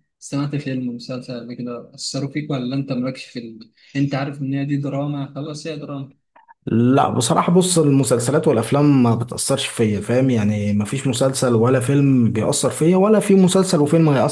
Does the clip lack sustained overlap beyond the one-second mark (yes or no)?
yes